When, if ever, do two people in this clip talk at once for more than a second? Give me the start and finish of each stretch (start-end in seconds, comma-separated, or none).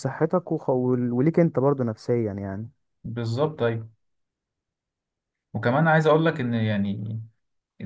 none